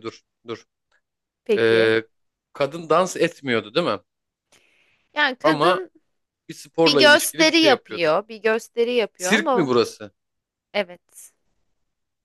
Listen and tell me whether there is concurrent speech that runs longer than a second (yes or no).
yes